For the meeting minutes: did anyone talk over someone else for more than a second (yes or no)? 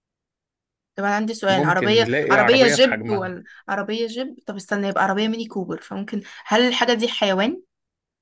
yes